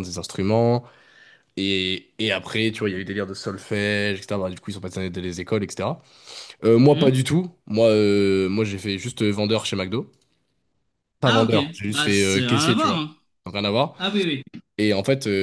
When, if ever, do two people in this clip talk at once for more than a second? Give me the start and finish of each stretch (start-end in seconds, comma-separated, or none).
11.2-13.1